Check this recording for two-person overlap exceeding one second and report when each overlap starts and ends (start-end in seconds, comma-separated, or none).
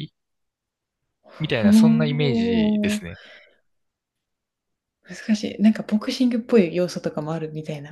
1.4-3.0